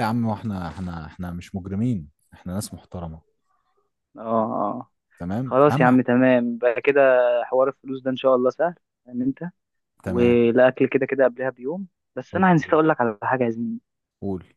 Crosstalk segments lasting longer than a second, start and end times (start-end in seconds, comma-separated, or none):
none